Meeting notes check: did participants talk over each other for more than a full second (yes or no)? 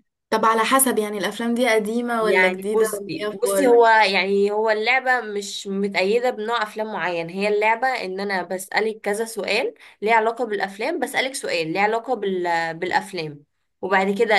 yes